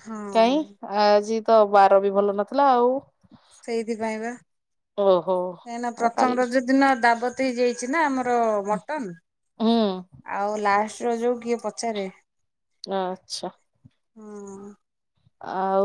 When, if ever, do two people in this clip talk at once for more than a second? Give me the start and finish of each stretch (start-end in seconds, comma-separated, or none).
none